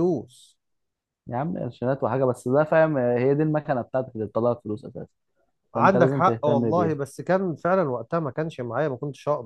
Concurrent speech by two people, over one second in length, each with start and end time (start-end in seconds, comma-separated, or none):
5.8-7.0